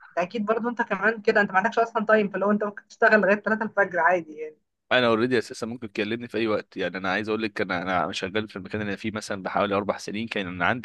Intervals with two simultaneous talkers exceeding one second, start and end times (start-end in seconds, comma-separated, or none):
none